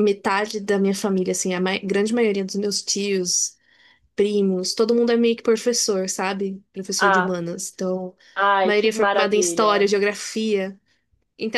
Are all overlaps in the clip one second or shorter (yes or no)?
no